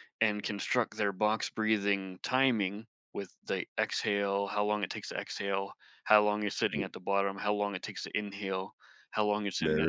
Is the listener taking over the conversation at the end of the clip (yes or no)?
yes